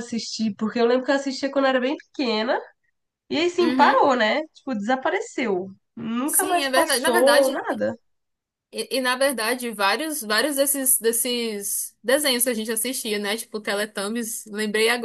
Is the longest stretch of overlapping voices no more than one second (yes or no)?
no